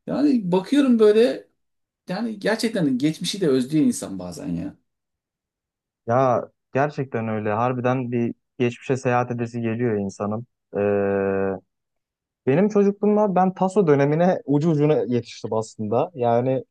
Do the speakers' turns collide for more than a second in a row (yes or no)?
no